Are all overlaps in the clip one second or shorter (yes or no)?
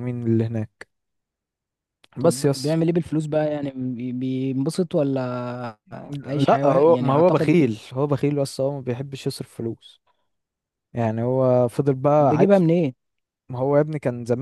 no